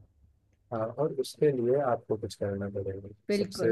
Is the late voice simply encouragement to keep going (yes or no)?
yes